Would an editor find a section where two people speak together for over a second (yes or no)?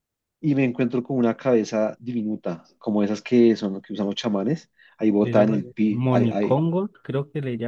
yes